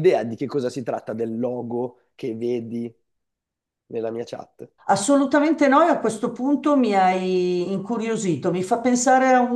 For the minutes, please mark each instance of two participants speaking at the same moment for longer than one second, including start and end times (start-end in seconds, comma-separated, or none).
none